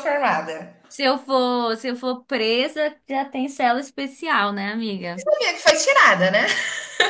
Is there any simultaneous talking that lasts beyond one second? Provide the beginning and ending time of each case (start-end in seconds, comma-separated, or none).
none